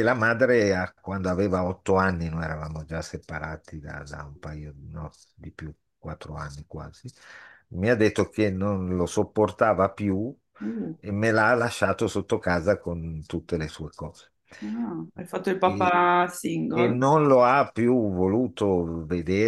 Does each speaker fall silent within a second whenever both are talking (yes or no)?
yes